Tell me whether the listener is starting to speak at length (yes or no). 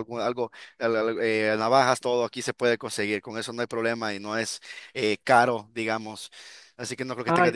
no